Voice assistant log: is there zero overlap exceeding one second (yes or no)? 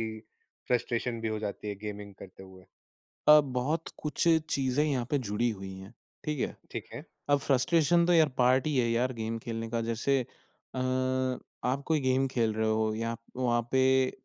yes